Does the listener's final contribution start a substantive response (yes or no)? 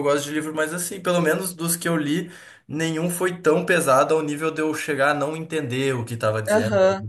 yes